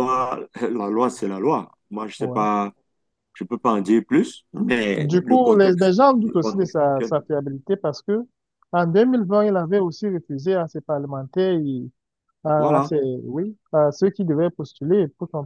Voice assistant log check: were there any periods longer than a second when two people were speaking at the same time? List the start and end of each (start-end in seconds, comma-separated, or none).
5.0-7.1